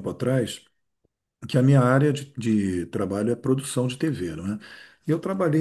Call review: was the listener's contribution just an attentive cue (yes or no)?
yes